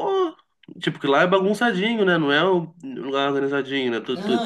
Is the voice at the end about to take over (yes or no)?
yes